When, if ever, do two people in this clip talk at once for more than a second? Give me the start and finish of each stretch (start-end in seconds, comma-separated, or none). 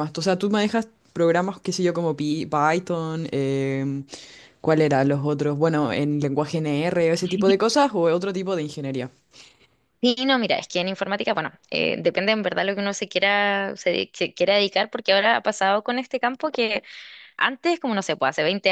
none